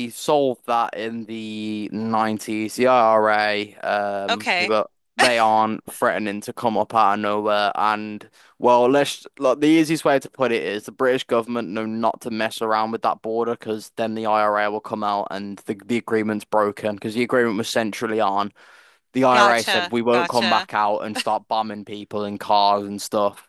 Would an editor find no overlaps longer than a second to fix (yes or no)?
no